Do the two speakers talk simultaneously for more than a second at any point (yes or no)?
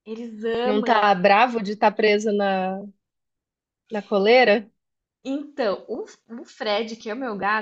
no